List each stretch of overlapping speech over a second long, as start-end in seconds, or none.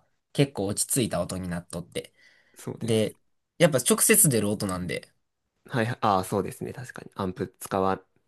none